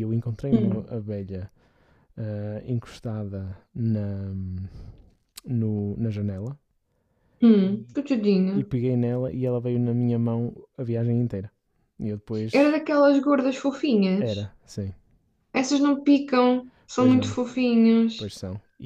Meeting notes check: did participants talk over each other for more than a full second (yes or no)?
no